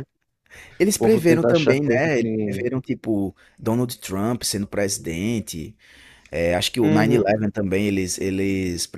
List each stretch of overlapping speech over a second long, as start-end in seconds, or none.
1.0-2.6